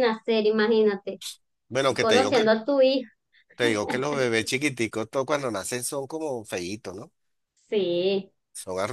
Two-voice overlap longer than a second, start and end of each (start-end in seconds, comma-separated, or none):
none